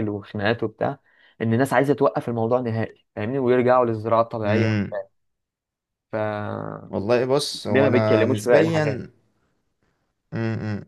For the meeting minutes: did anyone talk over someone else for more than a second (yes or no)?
yes